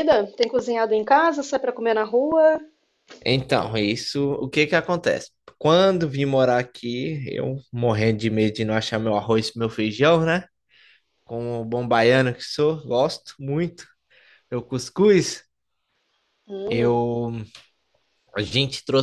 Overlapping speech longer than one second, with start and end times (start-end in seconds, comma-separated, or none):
none